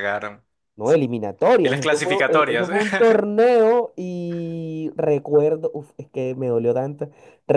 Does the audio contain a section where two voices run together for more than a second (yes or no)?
yes